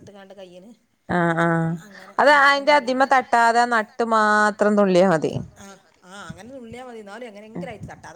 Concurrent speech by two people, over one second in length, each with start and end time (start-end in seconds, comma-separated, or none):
2.2-5.3